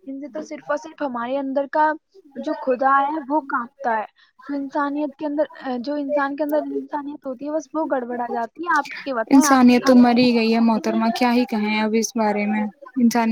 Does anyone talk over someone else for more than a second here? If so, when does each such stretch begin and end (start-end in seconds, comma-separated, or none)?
none